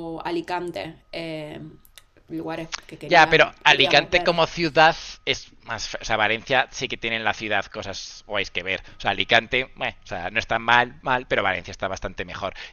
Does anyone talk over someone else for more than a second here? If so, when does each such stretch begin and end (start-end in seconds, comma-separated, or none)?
3.0-4.4